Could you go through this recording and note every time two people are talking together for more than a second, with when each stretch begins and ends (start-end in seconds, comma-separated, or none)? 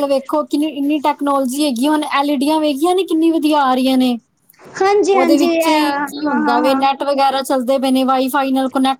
5.2-6.8